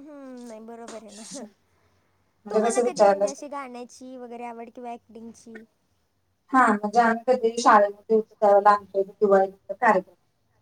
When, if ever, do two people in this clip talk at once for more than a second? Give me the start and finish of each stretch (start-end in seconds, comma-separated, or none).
none